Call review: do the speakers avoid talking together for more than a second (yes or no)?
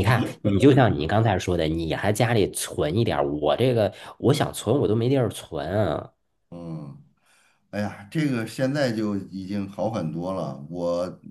yes